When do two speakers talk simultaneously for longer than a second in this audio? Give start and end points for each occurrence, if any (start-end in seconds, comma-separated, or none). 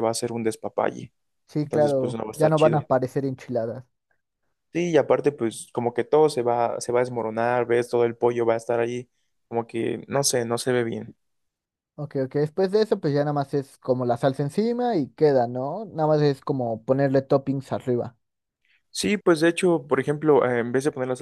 1.6-2.9